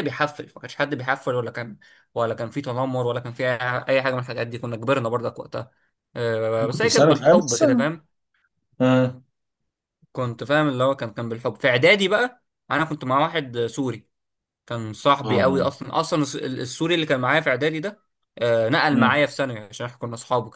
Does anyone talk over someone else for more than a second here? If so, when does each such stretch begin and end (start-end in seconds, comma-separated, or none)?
6.6-7.8